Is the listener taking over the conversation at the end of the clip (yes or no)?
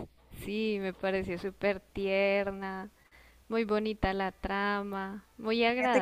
yes